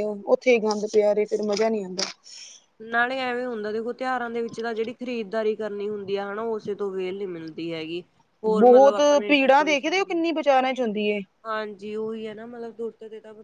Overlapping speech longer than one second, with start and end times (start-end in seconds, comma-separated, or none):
8.6-10.2